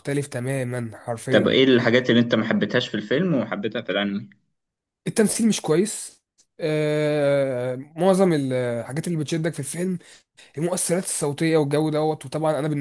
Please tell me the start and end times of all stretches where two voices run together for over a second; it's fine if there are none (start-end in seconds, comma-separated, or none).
none